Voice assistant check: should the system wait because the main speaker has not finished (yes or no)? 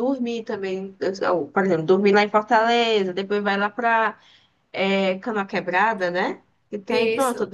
yes